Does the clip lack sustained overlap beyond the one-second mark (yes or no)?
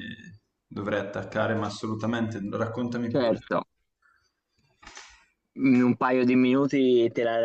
yes